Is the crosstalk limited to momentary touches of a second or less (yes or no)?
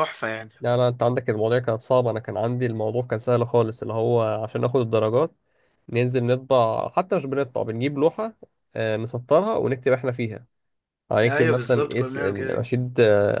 no